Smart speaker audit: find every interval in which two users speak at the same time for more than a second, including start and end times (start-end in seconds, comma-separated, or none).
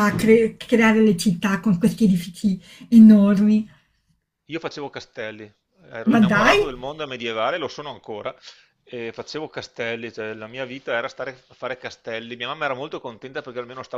none